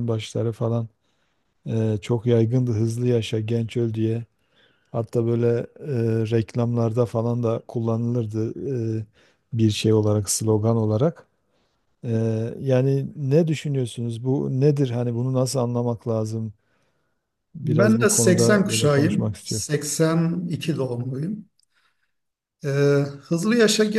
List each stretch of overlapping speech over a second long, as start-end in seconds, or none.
17.6-19.7